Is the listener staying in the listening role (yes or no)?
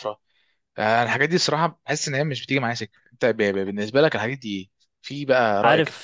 no